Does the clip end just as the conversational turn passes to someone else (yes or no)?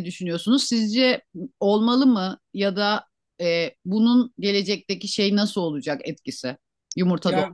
yes